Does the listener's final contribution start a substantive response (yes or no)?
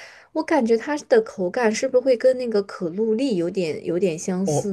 yes